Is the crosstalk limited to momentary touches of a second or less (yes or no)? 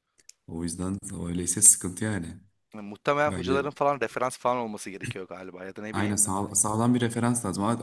yes